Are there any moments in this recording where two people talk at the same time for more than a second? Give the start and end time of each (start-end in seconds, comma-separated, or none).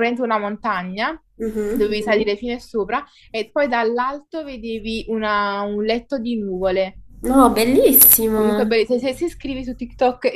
none